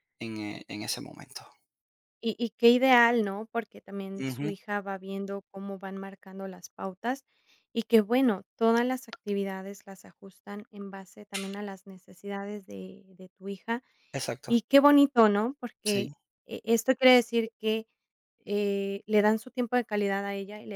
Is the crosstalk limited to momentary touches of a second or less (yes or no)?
yes